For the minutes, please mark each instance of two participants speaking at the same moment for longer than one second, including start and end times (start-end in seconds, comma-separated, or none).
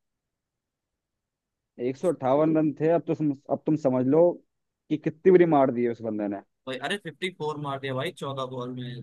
none